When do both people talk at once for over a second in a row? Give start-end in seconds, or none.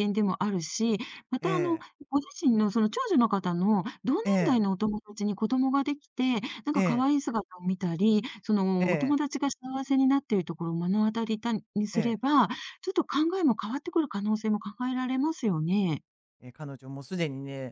none